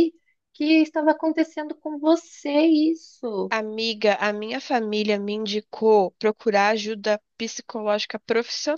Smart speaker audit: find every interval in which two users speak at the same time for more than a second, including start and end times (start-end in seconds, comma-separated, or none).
none